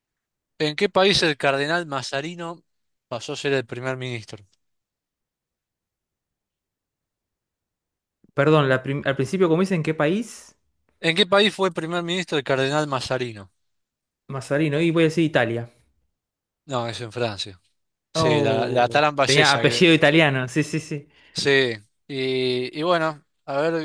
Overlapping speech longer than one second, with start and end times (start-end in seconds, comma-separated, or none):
18.1-19.9